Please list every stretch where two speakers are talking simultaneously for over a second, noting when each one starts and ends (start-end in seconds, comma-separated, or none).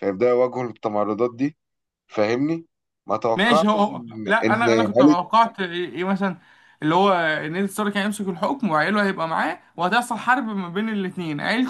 3.4-5.2